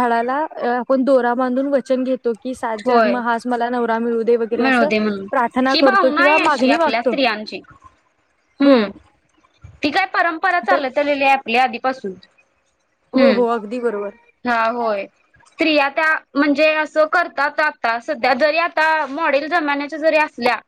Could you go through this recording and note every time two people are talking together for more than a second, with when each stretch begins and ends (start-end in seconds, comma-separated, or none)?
none